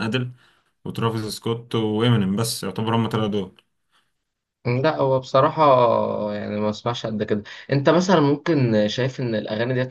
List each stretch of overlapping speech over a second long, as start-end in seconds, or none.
none